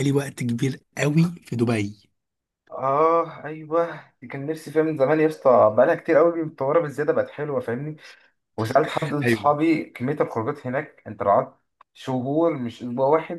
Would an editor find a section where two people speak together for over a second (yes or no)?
no